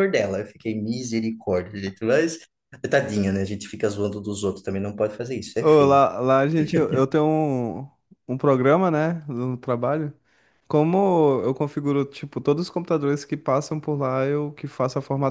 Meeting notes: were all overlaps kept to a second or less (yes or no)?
yes